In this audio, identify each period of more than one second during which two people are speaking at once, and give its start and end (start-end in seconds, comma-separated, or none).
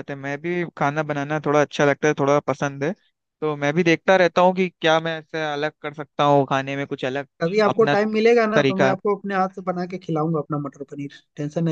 none